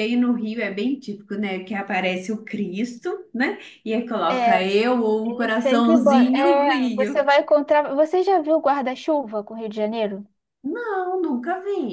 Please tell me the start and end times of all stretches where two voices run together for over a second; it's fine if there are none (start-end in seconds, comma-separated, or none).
5.2-7.2